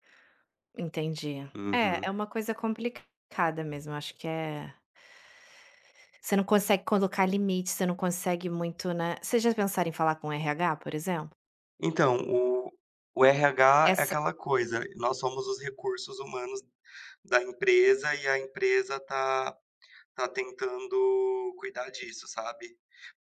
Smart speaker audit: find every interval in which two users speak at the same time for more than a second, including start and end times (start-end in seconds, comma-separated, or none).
none